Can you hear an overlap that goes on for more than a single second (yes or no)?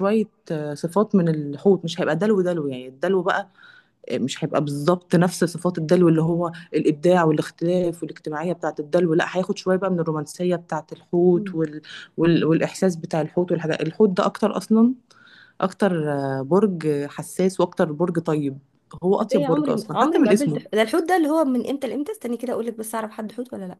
yes